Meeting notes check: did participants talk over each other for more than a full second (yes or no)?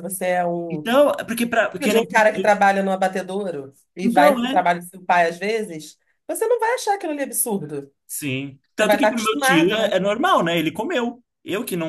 yes